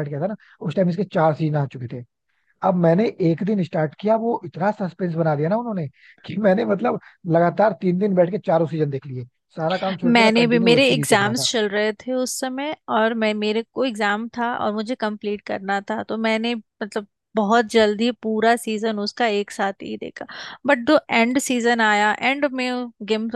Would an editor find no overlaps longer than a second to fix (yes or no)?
no